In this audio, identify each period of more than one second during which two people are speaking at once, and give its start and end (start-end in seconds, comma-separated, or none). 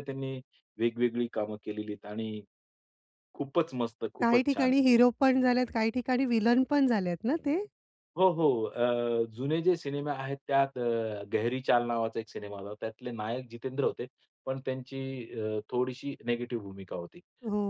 none